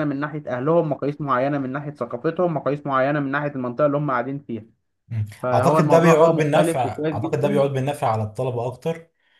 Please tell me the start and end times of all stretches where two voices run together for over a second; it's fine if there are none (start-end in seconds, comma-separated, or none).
5.4-7.6